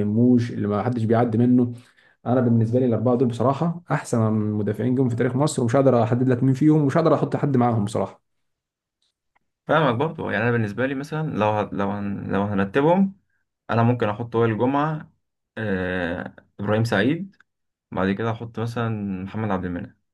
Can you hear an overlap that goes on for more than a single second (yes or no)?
no